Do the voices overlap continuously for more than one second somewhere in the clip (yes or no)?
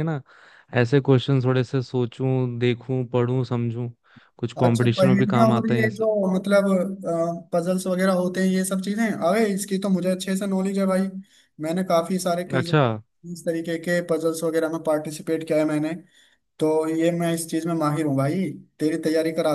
yes